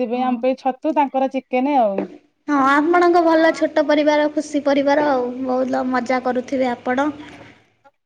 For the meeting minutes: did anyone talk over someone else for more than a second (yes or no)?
no